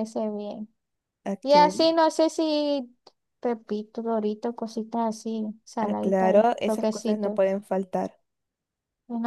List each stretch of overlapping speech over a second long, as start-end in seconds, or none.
5.8-7.4